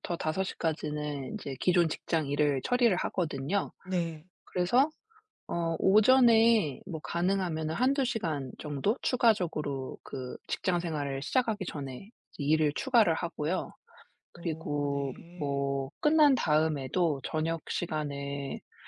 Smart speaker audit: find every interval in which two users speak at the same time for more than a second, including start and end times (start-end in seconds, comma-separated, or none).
14.3-15.7